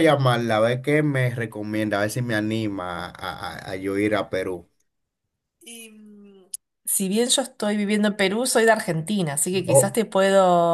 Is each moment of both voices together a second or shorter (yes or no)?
yes